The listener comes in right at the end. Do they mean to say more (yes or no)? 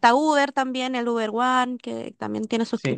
yes